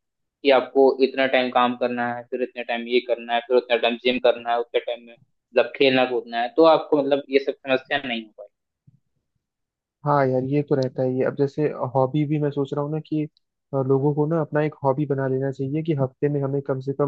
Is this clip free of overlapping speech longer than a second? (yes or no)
yes